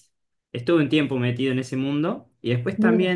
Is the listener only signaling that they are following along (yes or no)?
yes